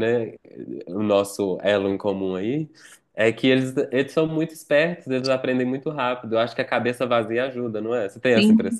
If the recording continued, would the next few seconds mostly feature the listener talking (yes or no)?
yes